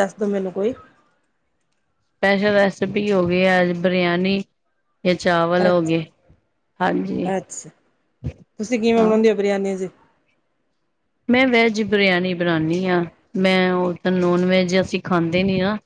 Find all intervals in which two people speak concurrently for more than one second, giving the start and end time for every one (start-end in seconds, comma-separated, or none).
none